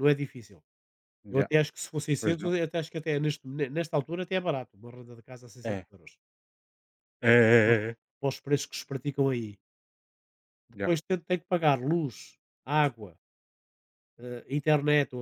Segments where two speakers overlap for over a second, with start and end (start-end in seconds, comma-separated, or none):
none